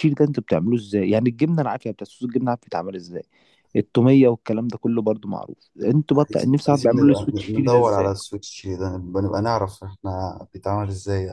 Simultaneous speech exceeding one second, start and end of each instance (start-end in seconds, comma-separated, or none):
6.1-8.1